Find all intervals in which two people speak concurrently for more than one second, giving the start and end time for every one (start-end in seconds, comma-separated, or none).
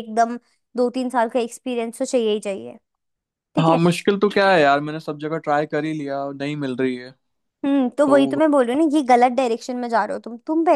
none